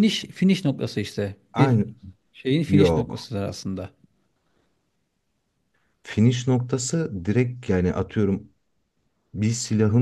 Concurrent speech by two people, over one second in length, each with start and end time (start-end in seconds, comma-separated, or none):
none